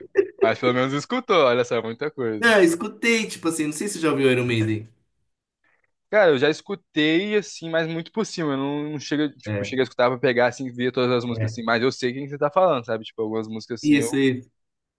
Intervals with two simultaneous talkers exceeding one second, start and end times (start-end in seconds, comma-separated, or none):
none